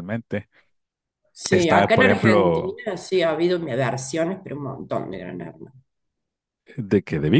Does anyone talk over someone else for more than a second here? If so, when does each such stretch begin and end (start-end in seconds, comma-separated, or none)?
1.5-2.8